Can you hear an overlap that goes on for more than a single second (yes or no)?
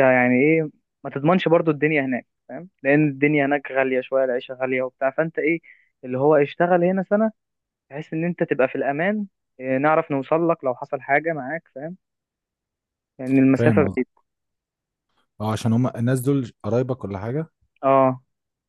no